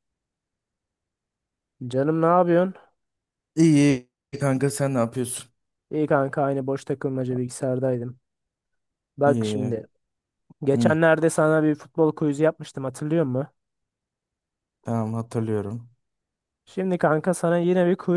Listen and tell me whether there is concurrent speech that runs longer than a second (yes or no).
no